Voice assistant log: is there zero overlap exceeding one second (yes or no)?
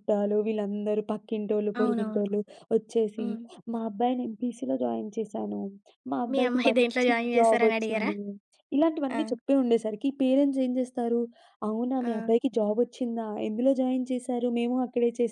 no